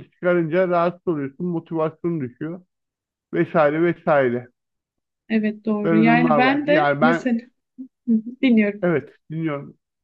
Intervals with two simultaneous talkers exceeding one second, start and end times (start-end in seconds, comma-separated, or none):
5.8-7.3